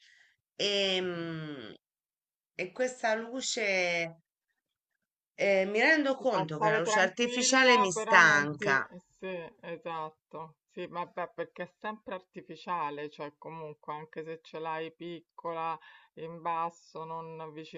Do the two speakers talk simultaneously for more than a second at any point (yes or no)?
yes